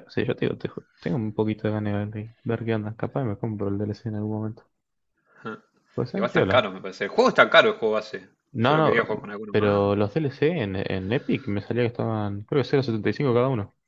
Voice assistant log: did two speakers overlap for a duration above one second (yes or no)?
yes